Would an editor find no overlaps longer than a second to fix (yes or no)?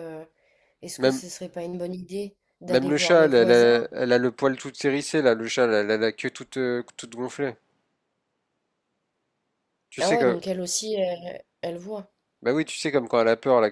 no